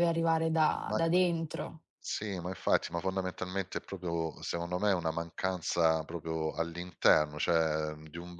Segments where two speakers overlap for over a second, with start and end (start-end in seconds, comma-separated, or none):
none